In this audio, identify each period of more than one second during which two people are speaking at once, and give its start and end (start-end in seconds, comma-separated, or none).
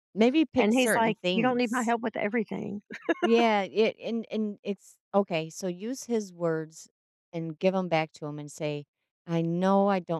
0.6-1.9